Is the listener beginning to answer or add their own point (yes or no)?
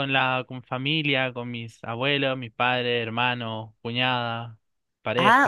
yes